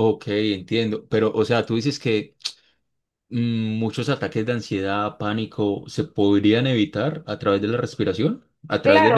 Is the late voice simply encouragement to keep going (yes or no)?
no